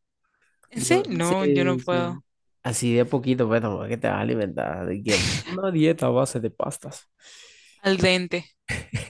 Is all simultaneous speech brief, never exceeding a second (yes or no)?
no